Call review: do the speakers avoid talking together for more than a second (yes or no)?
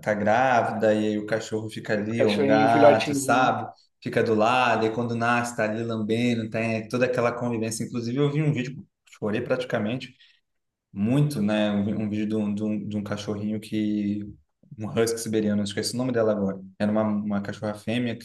no